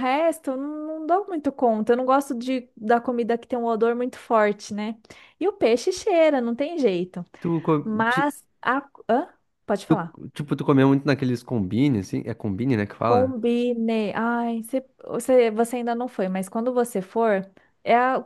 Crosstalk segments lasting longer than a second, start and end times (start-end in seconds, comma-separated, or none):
none